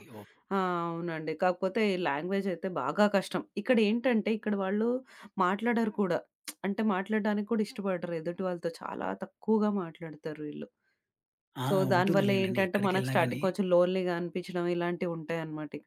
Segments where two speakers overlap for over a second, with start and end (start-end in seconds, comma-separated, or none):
11.7-13.4